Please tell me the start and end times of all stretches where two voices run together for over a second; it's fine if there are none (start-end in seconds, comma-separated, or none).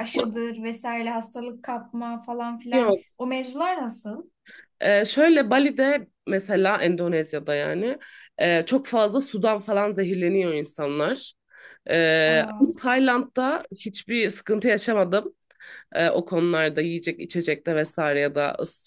none